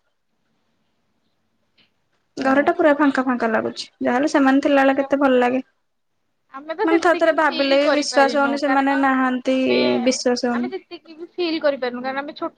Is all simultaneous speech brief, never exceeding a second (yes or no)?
no